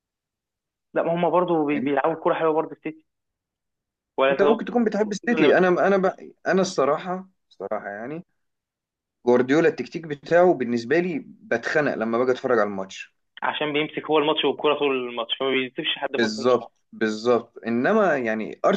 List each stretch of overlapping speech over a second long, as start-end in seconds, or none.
4.3-5.7